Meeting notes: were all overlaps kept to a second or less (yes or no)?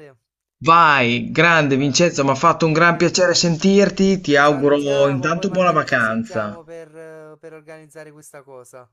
no